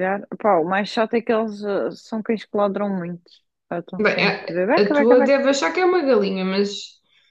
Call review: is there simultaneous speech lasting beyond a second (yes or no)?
yes